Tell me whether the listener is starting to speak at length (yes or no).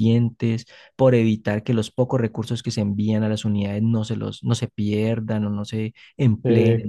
yes